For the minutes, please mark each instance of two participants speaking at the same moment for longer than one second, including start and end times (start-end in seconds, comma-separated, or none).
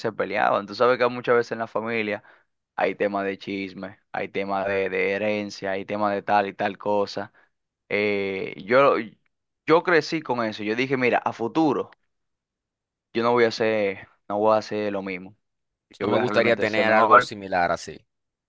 16.0-17.3